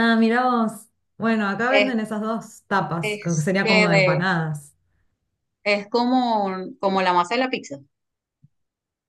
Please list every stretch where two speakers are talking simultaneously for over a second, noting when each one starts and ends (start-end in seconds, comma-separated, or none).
3.0-4.3